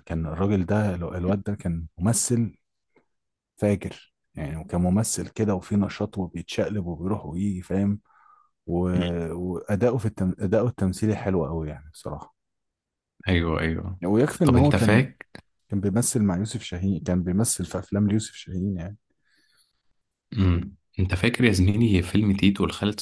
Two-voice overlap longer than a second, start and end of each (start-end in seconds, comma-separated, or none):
none